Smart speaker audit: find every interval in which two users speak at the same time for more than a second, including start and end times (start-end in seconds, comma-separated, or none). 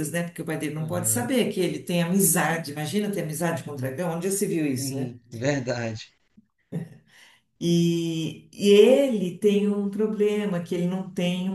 none